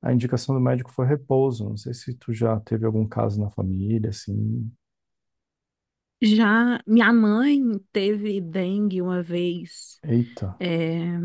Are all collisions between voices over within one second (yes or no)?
yes